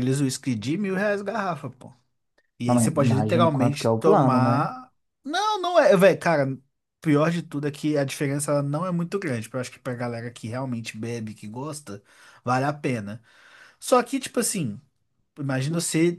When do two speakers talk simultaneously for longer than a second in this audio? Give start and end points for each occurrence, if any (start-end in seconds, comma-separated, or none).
2.7-4.7